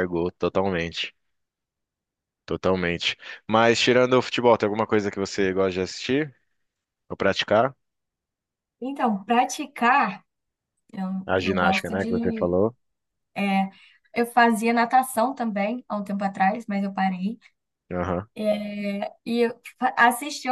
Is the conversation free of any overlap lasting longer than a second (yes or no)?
no